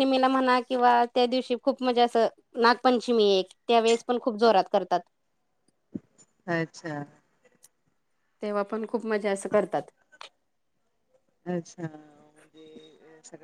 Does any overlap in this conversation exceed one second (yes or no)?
no